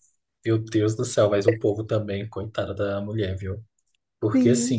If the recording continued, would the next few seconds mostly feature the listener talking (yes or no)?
no